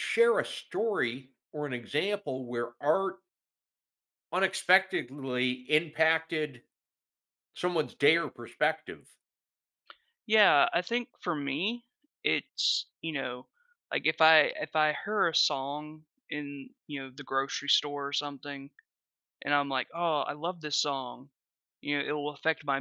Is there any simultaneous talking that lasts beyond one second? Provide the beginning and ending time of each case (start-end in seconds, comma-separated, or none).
none